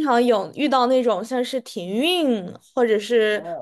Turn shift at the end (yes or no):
yes